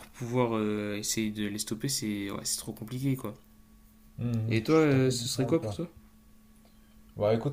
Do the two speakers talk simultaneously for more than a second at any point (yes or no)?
yes